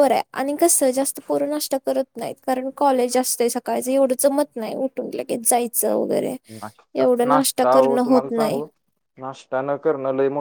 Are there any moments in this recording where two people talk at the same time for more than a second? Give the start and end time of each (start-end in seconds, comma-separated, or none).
7.0-8.6